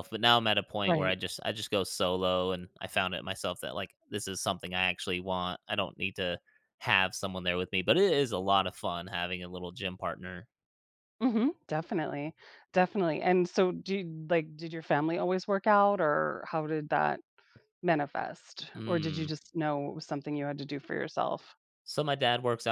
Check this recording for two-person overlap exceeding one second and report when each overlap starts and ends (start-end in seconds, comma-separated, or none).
none